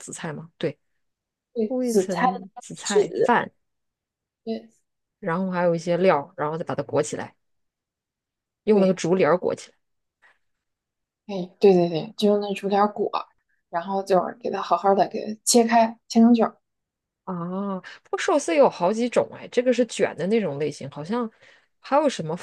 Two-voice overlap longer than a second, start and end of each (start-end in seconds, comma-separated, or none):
1.7-3.3